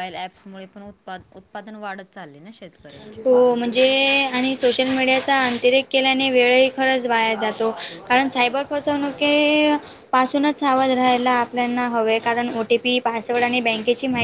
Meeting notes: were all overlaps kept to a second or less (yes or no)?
yes